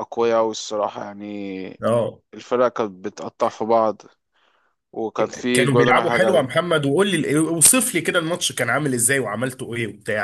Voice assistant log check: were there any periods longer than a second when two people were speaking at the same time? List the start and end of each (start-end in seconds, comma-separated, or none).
5.2-6.5